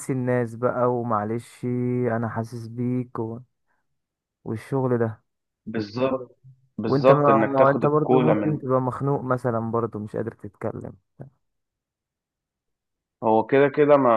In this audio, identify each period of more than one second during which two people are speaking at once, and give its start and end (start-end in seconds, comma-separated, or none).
6.9-8.6